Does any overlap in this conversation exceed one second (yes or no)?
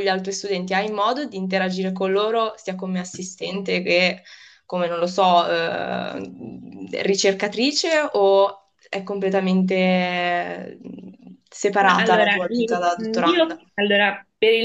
yes